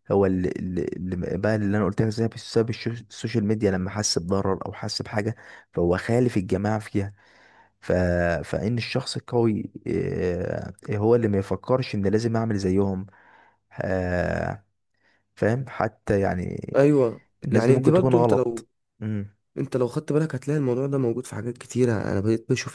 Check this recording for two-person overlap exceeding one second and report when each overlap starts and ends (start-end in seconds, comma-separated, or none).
17.4-18.7